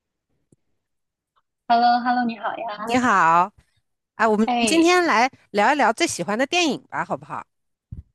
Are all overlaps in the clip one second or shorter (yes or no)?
yes